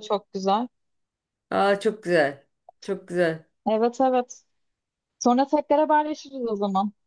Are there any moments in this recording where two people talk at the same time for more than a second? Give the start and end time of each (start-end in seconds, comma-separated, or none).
none